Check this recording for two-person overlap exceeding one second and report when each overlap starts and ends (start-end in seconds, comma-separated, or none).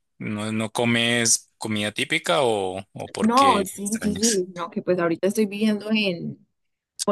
3.2-4.4